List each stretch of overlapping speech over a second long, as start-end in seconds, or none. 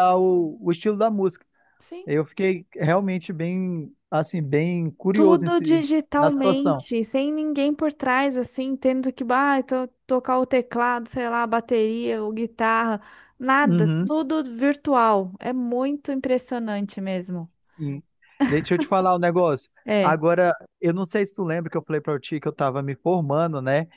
5.1-6.8